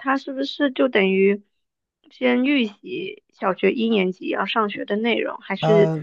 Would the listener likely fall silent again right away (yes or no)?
yes